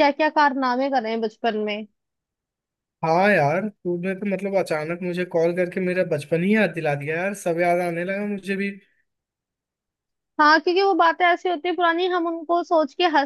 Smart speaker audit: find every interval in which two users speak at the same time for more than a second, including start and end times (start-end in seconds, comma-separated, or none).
none